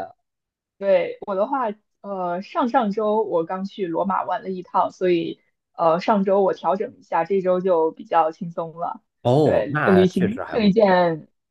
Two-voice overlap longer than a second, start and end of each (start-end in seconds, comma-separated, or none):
9.4-10.9